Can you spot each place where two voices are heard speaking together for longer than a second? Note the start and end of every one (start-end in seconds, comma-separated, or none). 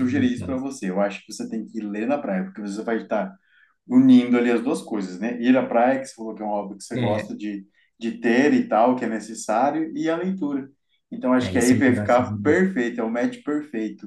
11.4-12.6